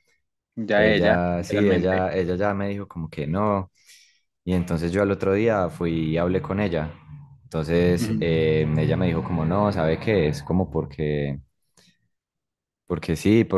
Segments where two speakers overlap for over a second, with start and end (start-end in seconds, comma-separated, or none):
0.7-2.0